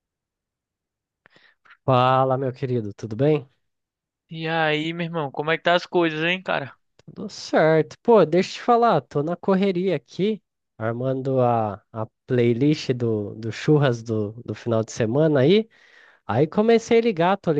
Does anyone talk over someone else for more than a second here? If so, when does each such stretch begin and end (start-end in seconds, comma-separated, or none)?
none